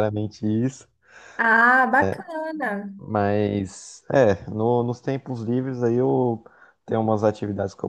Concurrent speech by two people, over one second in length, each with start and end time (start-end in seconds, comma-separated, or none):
none